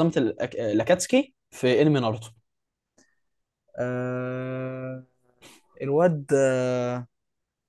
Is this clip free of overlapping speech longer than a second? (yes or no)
yes